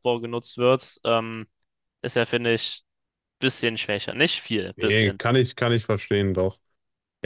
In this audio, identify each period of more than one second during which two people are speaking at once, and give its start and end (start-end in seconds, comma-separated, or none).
none